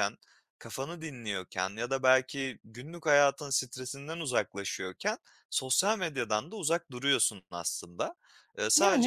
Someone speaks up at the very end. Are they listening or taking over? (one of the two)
listening